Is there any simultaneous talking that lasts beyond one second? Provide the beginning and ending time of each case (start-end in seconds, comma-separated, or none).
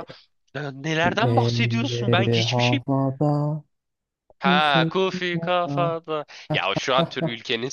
1.3-2.8, 4.4-5.9